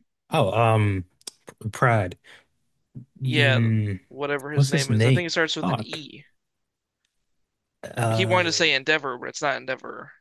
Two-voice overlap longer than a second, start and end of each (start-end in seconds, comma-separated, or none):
4.5-6.0